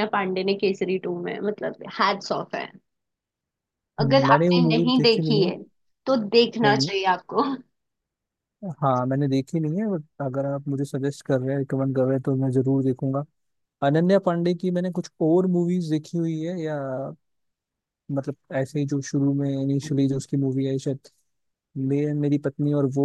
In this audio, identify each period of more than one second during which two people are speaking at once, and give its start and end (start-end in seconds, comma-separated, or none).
4.0-5.5